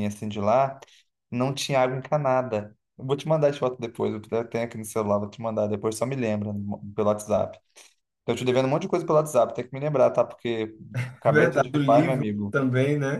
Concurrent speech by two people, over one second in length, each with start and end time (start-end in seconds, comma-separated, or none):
11.2-12.6